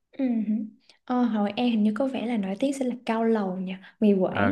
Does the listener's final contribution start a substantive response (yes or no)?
yes